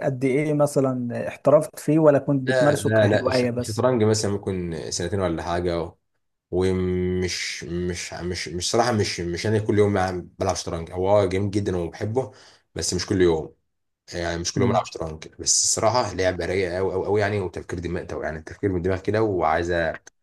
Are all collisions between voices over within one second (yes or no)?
no